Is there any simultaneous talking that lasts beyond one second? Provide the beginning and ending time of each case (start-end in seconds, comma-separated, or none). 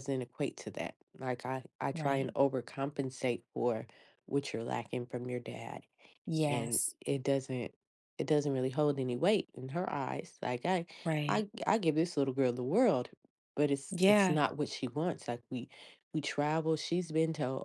none